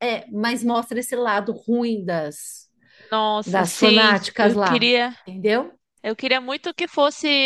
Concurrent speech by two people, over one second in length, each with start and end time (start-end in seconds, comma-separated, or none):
3.4-4.9